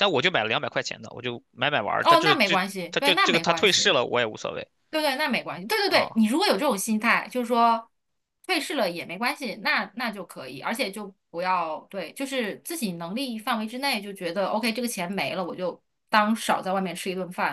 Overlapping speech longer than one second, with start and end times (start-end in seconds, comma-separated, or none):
2.0-4.0